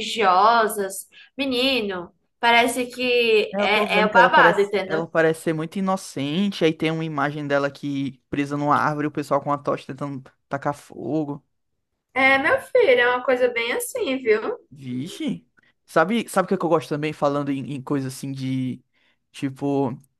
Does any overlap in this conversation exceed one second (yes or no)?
yes